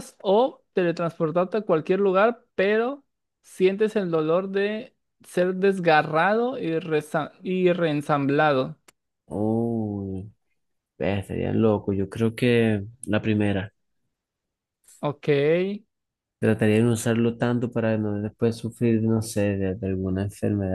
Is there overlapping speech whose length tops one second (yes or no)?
no